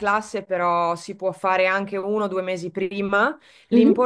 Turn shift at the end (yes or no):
no